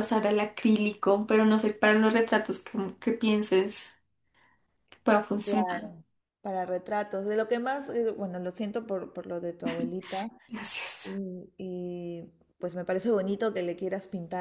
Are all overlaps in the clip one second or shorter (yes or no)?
yes